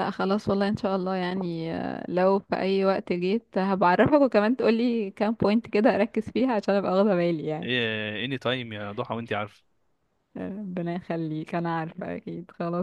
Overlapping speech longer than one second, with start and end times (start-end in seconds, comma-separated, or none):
none